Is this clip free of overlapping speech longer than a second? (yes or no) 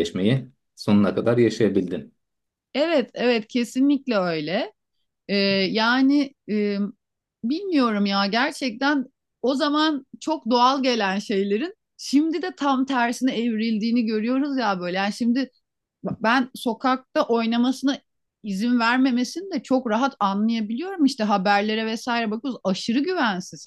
yes